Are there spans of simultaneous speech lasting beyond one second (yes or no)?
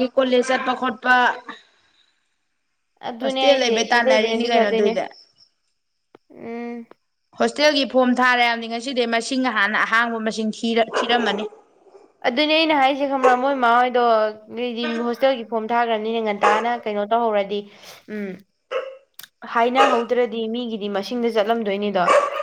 yes